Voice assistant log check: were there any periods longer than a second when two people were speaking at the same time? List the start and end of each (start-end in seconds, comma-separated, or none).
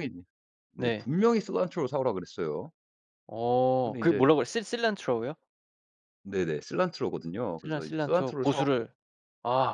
7.6-8.8